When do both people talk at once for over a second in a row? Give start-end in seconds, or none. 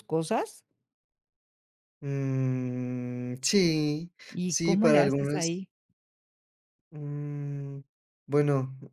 4.3-5.6